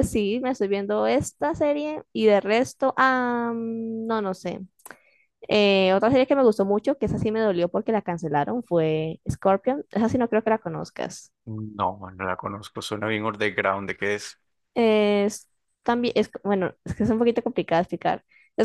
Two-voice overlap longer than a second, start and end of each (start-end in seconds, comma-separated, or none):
none